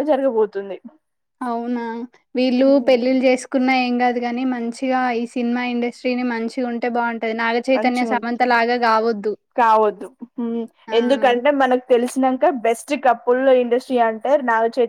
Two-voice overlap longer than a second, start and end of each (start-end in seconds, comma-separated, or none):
none